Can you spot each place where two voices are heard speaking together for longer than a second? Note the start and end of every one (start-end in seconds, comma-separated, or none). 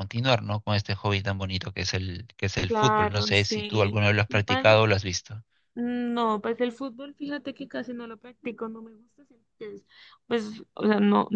2.7-4.9